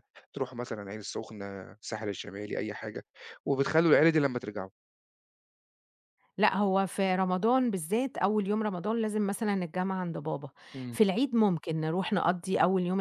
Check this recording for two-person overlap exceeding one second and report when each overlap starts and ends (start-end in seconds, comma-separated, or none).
none